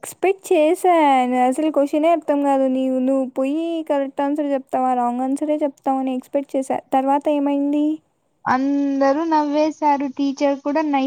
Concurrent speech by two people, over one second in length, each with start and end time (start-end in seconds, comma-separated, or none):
none